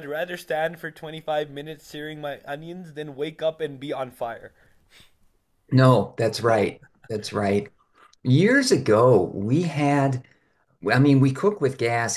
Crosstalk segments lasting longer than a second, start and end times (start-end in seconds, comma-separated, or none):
none